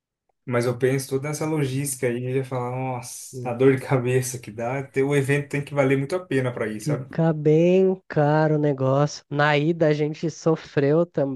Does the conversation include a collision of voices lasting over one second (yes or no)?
no